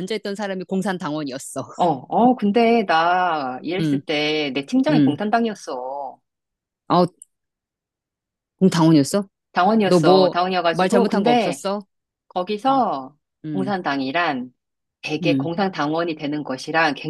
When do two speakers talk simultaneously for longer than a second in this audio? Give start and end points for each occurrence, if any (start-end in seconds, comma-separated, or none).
9.8-11.6